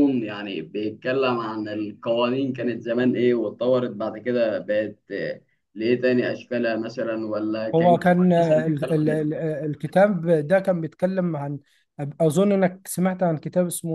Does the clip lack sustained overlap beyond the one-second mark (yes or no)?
no